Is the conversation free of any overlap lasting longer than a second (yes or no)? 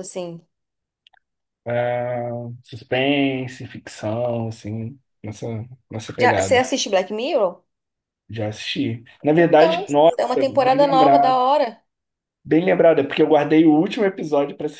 no